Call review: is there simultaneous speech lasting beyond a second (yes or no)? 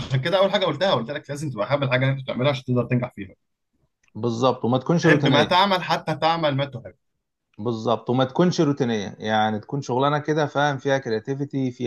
no